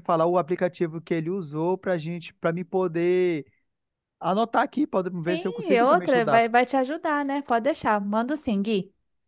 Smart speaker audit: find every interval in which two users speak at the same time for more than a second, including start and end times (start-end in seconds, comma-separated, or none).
5.1-6.4